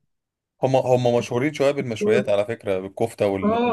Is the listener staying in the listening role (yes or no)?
no